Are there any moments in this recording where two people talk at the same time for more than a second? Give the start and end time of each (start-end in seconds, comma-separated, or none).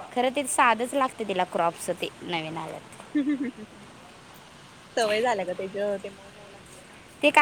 none